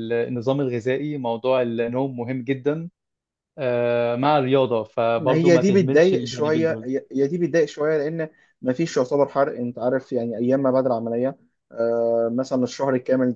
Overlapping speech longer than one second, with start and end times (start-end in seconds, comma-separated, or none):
5.2-6.9